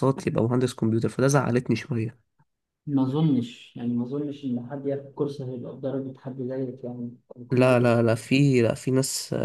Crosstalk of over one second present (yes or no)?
no